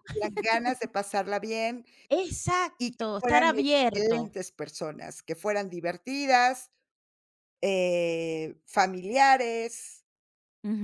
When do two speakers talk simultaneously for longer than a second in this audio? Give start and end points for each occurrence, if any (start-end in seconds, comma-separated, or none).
2.8-4.2